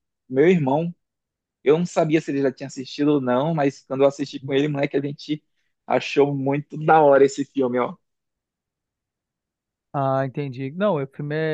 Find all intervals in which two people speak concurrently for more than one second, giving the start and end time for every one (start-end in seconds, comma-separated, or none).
none